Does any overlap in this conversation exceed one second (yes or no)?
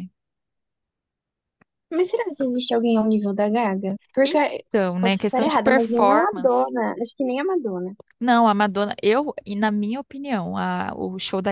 yes